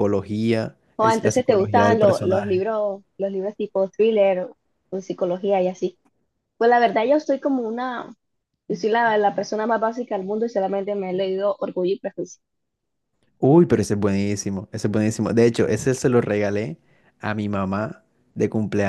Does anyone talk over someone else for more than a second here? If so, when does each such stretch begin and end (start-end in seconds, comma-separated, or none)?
1.0-2.6